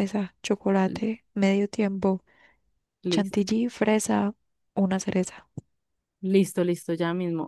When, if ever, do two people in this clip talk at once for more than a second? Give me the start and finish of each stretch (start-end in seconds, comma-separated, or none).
none